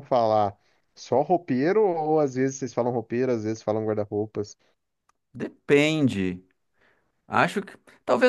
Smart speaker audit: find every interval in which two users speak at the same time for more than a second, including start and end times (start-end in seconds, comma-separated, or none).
none